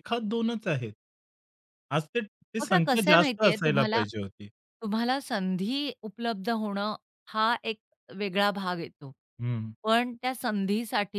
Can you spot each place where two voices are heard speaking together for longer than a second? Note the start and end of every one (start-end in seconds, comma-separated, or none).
2.6-4.0